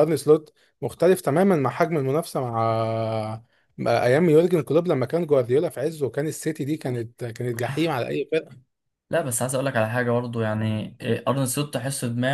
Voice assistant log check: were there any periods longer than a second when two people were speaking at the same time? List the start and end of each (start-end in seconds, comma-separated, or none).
none